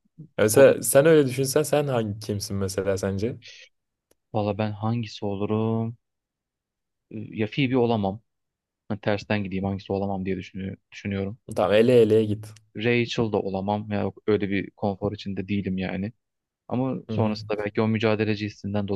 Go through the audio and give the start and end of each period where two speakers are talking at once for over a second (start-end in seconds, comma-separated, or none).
none